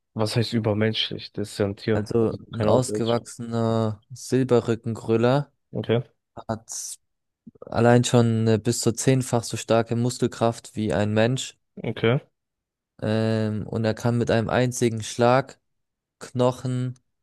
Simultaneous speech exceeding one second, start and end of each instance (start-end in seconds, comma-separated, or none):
1.9-3.2